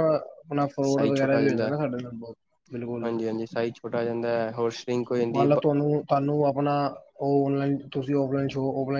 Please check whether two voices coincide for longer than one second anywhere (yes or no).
no